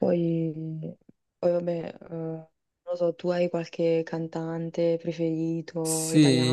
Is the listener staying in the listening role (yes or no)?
no